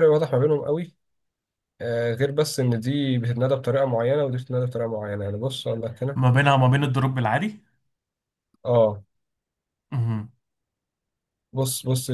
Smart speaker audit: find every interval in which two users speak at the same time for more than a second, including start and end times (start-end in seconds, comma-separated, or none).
none